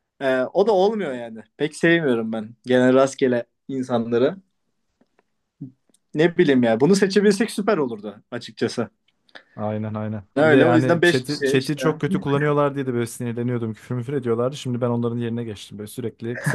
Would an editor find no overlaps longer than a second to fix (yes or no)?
no